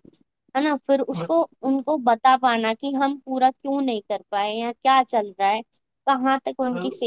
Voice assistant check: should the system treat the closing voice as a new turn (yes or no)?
no